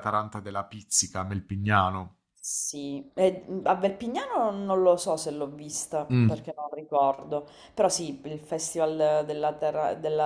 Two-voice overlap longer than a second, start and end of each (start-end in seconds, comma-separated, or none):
none